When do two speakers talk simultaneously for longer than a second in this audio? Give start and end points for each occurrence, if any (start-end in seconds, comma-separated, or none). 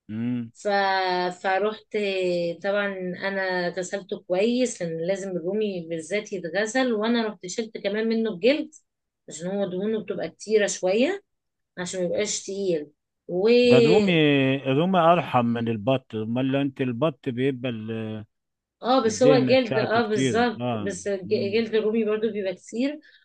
19.1-21.6